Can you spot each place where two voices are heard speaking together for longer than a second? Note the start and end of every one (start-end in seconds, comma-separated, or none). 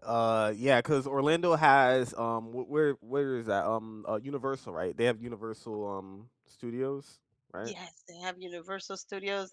none